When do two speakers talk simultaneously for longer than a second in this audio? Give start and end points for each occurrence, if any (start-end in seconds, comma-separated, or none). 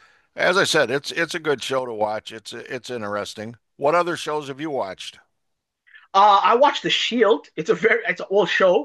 none